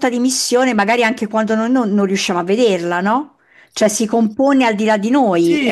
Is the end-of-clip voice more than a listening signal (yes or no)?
yes